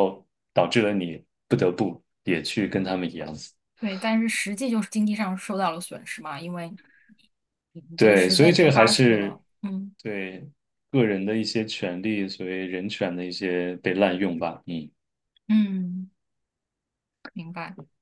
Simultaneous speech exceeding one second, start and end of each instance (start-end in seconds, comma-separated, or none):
8.0-9.4